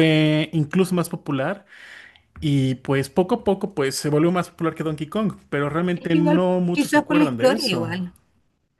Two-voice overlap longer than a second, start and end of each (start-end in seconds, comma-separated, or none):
5.9-8.0